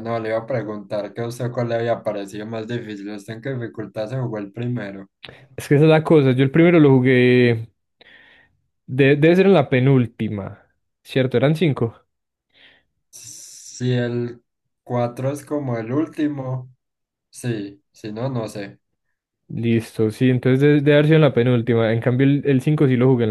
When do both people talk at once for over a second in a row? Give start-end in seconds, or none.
none